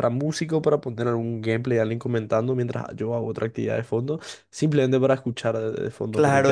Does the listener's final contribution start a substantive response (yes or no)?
yes